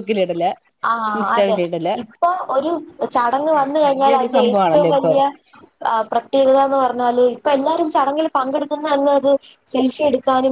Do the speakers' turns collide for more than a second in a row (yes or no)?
yes